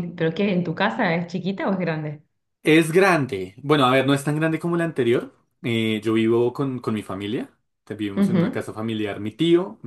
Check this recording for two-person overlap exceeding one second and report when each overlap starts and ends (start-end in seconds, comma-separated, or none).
none